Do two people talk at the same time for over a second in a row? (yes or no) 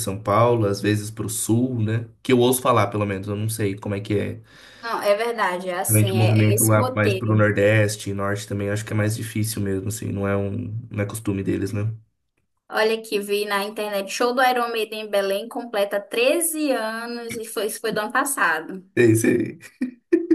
yes